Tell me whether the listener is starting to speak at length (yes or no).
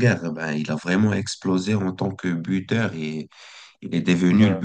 no